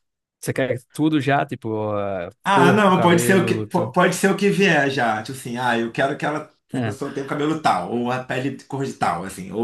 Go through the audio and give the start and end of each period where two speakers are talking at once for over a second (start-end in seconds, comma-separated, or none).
2.4-4.0